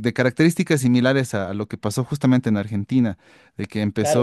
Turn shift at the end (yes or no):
yes